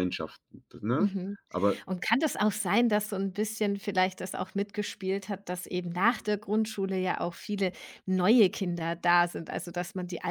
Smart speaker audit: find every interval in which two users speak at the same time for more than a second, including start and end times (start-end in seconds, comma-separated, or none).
none